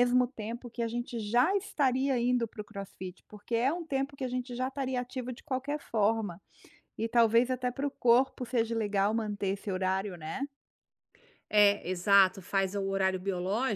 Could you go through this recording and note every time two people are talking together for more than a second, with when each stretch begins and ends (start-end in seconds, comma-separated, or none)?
none